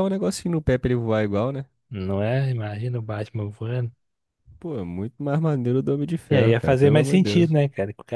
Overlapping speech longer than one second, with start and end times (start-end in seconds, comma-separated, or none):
6.3-7.6